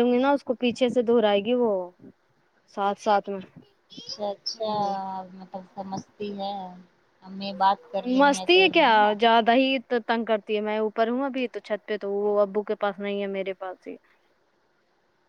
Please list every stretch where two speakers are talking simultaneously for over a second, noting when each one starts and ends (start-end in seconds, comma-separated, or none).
none